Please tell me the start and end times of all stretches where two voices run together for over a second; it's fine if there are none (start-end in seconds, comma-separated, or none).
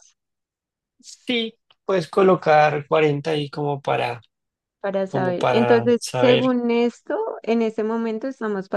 5.1-6.6